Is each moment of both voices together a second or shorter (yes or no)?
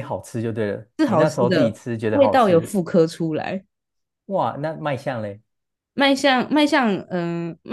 no